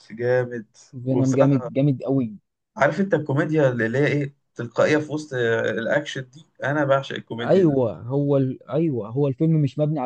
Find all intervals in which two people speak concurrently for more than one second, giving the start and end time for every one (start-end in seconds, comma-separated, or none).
none